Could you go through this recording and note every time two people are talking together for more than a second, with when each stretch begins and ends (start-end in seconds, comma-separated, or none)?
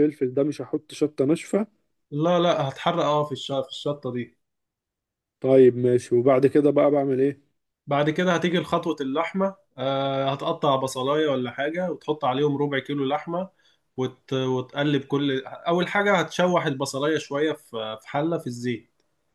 none